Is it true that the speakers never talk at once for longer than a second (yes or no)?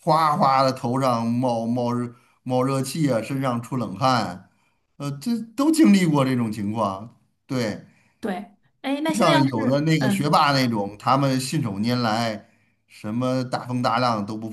no